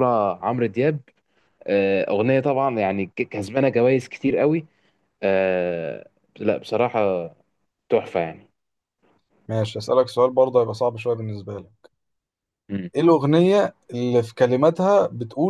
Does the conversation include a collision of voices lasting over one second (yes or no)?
no